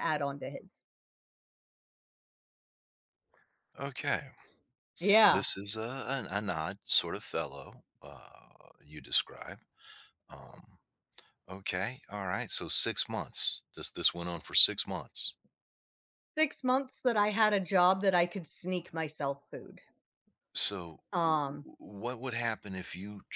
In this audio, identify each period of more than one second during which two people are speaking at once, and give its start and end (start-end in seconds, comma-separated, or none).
none